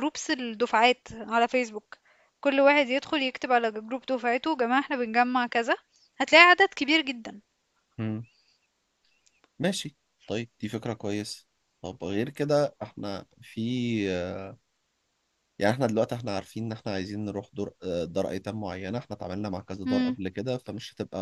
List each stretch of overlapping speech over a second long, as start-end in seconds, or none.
none